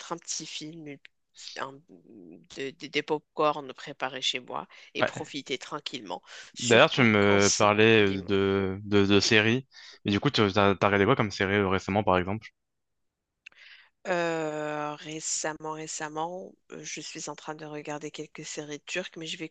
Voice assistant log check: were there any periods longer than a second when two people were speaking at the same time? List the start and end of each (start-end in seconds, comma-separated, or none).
6.6-8.3